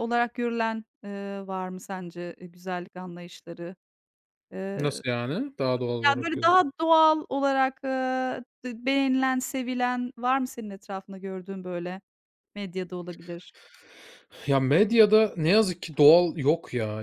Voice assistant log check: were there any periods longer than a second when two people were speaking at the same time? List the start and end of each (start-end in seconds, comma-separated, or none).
none